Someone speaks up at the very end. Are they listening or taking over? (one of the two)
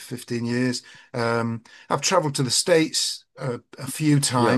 listening